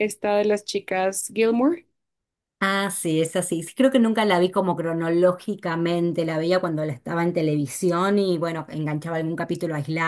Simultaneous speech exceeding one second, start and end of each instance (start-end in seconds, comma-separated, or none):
none